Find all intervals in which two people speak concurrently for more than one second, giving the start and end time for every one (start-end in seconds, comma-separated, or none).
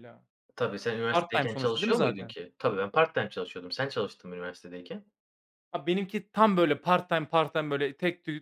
1.1-2.3